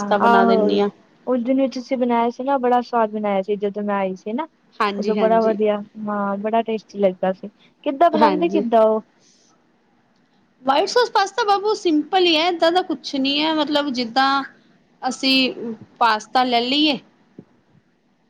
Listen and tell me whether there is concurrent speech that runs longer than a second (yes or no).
no